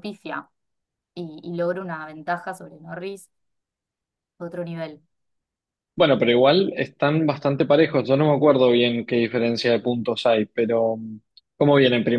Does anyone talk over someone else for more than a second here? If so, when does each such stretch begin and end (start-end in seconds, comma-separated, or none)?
none